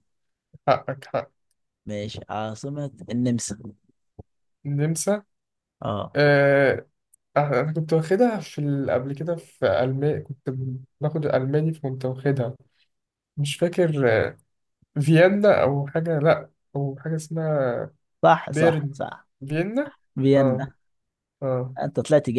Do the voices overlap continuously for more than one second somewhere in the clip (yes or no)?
no